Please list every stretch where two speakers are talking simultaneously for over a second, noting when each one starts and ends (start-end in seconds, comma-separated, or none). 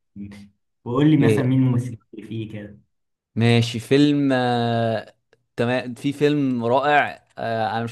none